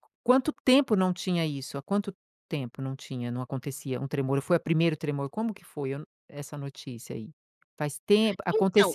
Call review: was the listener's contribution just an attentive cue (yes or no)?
yes